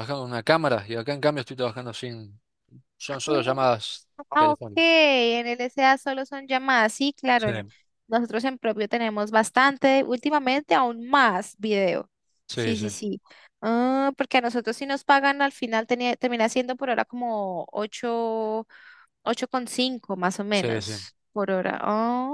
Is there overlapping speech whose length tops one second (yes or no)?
no